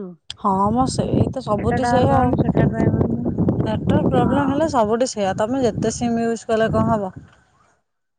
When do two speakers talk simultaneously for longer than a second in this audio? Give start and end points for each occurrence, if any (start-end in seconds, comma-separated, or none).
none